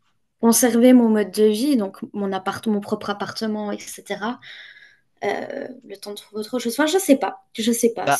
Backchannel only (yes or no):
no